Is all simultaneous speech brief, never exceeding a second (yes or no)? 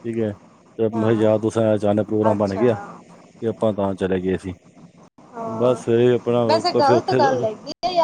yes